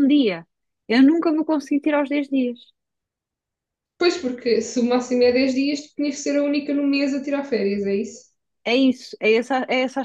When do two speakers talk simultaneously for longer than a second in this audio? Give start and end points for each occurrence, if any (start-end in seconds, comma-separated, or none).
none